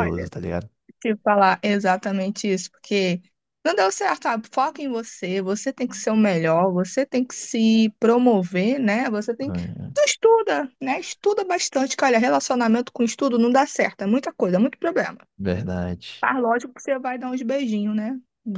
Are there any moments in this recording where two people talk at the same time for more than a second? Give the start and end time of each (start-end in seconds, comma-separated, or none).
none